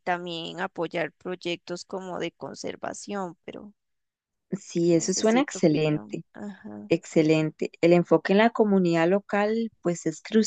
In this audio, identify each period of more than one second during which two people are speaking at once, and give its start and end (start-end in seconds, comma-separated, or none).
4.9-6.2